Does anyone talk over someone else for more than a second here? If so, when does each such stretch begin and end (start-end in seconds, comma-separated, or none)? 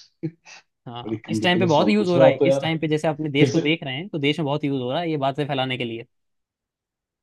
1.0-2.6